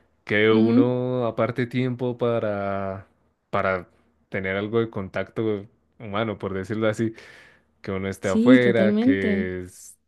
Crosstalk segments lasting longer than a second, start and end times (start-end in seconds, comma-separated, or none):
8.2-9.5